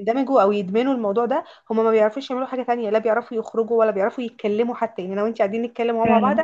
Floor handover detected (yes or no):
no